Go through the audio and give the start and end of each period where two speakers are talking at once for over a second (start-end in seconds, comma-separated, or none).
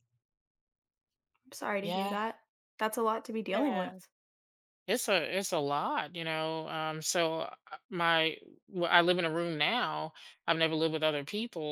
none